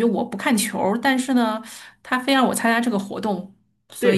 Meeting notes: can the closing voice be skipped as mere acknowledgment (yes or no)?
no